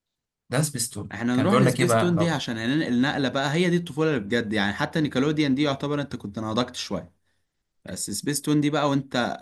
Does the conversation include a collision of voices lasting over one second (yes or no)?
yes